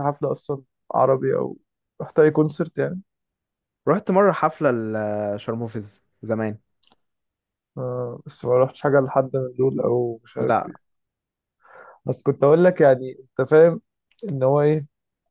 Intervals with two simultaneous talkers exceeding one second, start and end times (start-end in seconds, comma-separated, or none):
none